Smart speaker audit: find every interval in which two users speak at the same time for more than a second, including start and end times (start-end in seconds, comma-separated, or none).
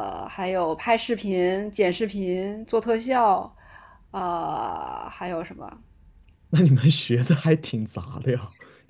none